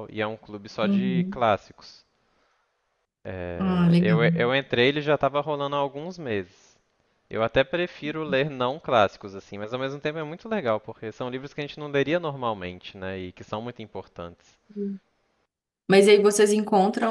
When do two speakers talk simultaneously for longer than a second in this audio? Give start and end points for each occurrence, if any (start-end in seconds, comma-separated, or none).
none